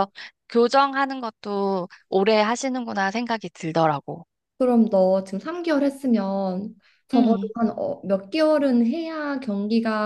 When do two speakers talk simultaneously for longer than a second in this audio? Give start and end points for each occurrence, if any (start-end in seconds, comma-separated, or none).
none